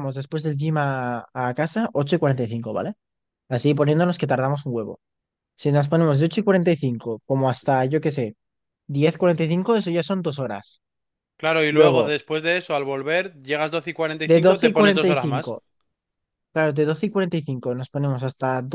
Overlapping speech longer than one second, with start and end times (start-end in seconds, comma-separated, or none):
14.3-15.6